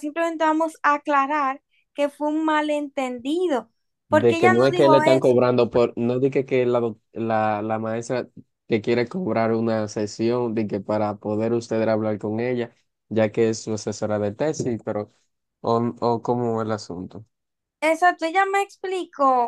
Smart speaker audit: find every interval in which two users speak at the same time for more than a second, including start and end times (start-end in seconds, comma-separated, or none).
4.1-5.4